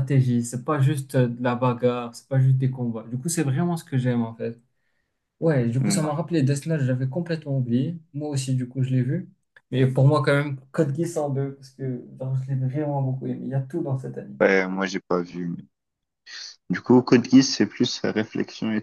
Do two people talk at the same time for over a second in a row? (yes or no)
no